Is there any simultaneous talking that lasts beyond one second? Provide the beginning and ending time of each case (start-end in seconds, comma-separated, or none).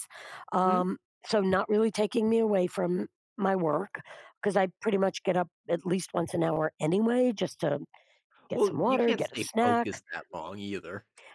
8.6-10.0